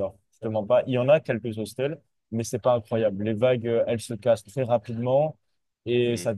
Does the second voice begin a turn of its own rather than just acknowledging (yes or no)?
no